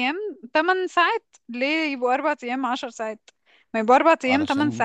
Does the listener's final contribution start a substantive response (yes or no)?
no